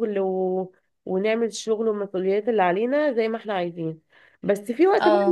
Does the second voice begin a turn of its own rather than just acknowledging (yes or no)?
no